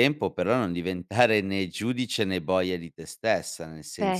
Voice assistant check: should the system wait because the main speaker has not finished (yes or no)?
yes